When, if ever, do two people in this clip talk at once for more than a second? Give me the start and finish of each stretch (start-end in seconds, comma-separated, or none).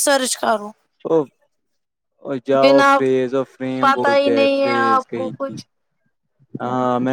3.8-5.6